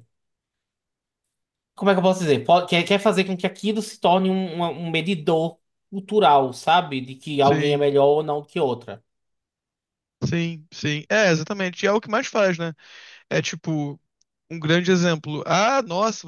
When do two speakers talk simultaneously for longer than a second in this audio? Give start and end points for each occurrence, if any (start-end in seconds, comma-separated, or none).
none